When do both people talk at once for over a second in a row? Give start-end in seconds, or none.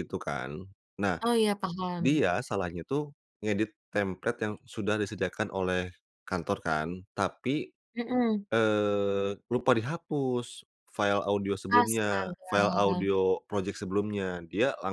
11.7-13.1